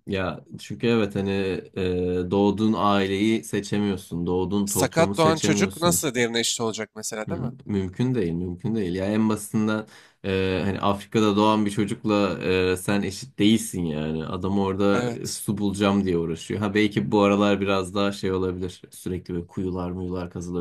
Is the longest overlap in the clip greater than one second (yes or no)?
yes